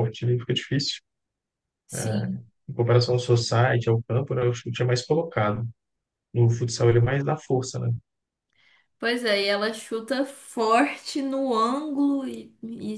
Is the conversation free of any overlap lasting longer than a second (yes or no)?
yes